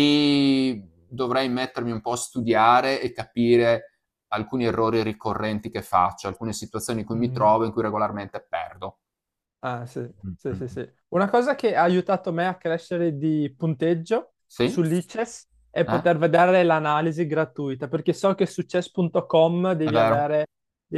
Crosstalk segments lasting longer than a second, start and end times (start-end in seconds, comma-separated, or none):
none